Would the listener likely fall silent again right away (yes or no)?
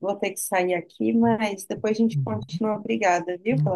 no